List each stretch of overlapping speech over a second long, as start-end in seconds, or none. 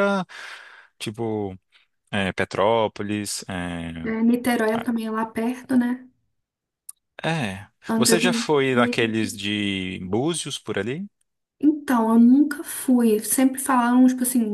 7.9-9.3